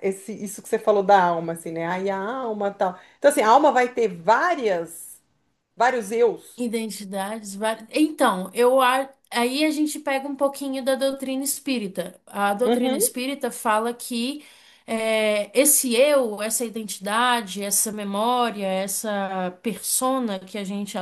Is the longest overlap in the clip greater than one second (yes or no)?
no